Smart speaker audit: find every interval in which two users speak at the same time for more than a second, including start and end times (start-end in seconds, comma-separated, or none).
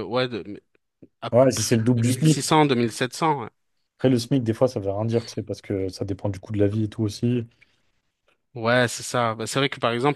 none